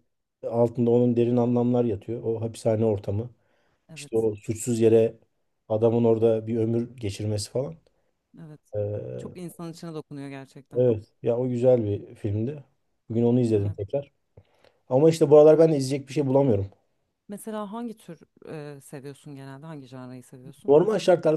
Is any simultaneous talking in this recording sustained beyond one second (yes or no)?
no